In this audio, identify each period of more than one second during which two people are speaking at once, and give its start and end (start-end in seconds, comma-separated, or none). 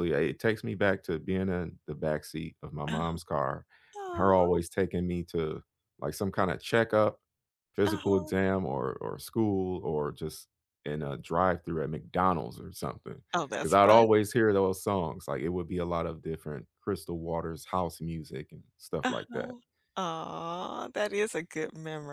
none